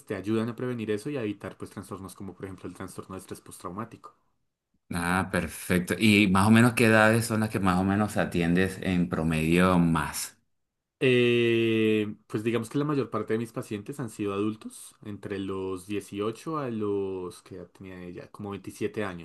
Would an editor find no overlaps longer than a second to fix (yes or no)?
yes